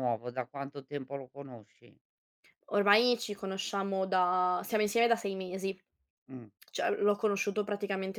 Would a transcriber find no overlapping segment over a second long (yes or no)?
yes